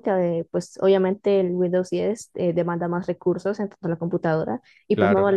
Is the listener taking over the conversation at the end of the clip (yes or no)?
no